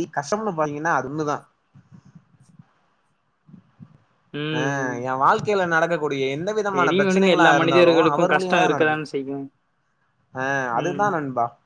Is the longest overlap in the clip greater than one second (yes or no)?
yes